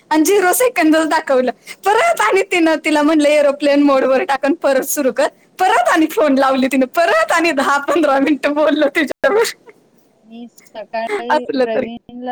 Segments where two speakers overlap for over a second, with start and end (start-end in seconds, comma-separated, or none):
none